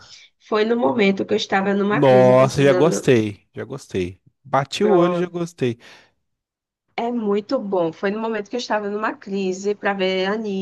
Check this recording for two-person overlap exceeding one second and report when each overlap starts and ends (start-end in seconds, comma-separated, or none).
1.9-3.1